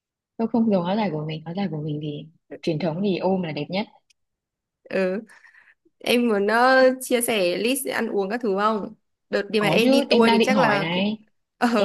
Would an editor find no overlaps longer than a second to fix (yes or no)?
no